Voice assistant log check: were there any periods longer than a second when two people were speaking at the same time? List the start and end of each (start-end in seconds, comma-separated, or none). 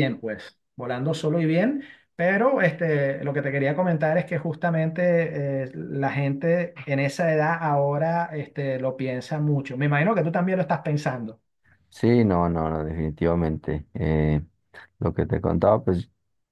none